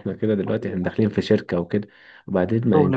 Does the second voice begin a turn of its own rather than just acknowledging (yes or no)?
no